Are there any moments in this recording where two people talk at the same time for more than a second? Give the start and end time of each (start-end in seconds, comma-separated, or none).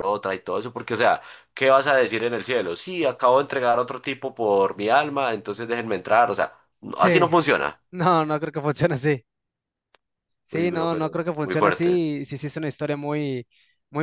10.5-12.0